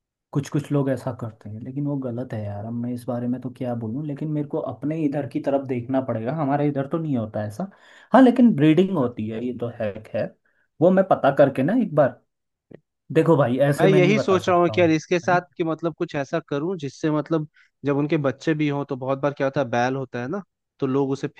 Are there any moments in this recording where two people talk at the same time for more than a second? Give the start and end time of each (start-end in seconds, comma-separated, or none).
13.8-15.4